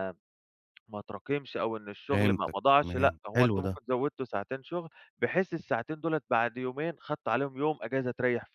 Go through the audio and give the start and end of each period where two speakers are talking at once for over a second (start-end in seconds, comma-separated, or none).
2.1-3.8